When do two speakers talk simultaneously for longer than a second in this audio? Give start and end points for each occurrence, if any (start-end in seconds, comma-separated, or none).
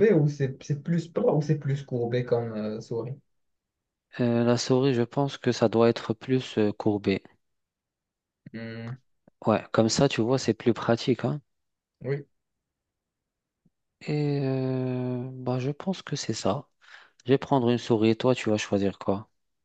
none